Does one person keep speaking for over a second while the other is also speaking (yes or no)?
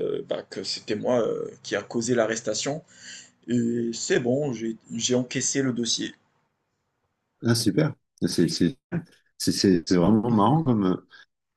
no